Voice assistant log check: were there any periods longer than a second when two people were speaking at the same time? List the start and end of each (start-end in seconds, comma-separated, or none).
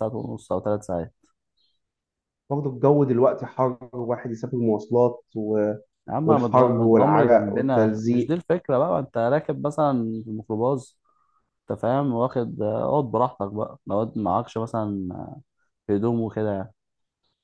6.2-8.4